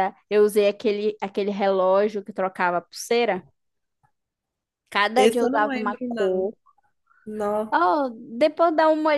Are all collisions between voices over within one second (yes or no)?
no